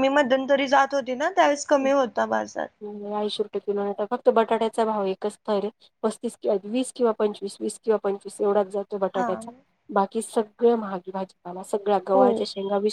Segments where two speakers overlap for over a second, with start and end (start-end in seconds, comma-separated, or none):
none